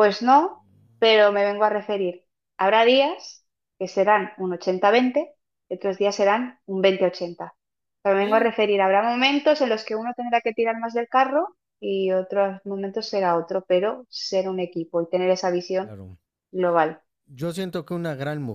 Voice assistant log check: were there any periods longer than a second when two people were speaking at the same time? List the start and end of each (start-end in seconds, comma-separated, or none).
none